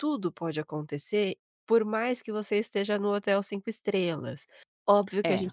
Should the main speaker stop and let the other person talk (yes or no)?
no